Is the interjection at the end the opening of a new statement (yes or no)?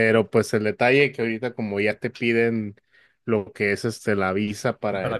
no